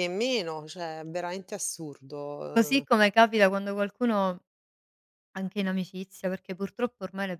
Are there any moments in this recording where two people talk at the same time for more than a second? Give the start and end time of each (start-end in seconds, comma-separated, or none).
none